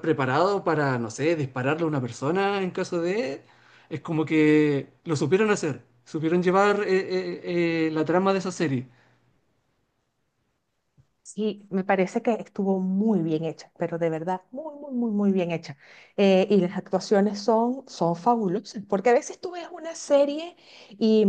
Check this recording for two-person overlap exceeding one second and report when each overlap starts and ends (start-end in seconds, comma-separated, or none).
none